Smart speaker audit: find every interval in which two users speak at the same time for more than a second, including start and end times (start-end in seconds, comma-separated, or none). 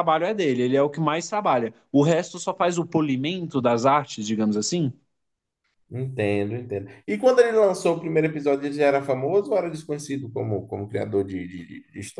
none